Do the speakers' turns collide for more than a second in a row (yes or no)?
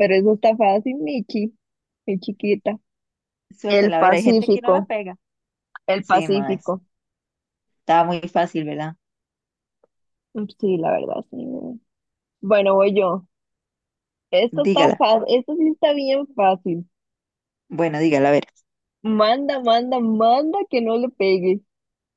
yes